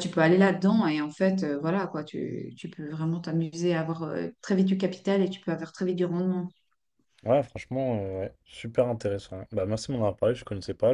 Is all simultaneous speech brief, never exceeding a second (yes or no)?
yes